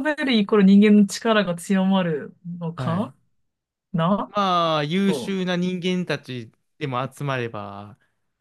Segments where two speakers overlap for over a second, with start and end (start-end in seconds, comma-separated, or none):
none